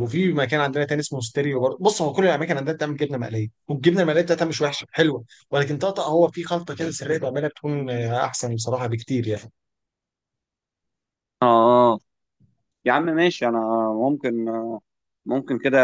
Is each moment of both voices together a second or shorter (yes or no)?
yes